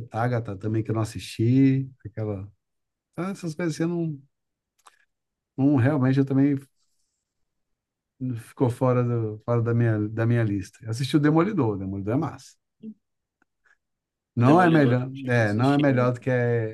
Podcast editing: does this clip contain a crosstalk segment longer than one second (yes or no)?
yes